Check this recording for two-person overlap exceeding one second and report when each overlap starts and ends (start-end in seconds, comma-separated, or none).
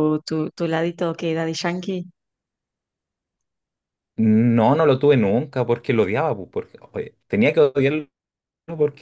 none